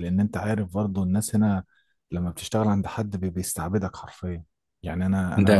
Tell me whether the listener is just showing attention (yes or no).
yes